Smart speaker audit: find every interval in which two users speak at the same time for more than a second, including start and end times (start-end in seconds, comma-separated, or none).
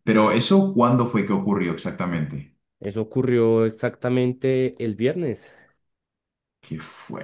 none